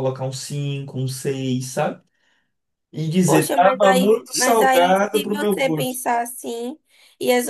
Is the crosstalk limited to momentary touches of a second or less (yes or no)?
no